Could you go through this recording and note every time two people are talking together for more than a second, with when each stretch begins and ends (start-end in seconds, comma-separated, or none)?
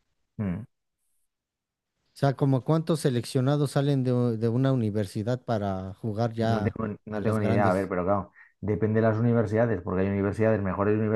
6.4-7.9